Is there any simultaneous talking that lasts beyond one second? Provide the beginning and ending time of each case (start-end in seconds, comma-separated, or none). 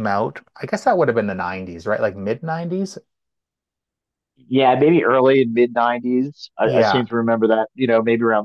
none